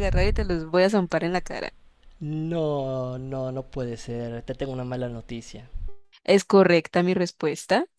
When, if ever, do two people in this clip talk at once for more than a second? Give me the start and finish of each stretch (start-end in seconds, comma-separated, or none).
none